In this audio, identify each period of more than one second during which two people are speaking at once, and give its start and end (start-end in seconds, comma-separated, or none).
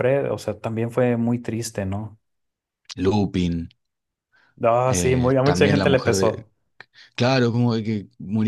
4.9-6.5